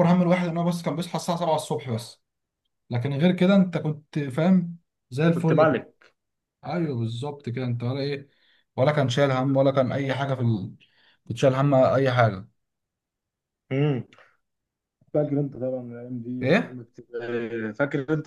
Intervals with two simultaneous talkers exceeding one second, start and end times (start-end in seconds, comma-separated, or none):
none